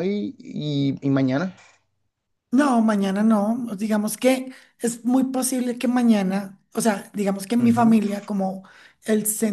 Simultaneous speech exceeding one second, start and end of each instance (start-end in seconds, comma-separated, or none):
none